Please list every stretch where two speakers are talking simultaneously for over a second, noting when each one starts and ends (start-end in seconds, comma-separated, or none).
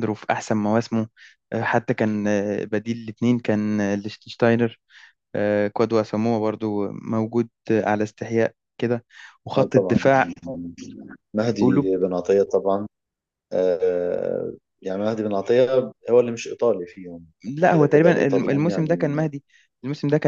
17.7-19.3